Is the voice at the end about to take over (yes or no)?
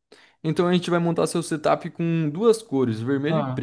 yes